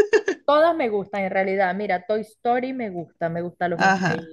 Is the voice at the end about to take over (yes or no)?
no